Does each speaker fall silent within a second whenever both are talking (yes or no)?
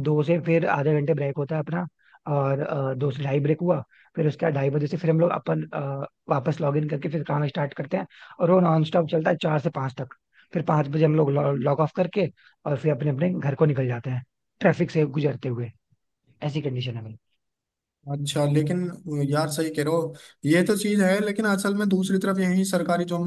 yes